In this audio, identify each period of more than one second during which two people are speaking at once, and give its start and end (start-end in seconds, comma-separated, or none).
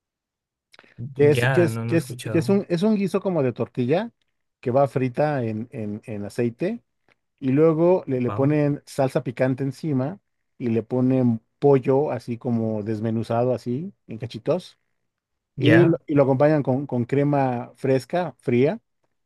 1.2-2.6